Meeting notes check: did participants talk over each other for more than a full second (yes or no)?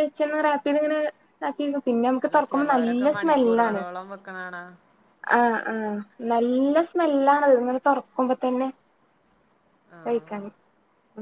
yes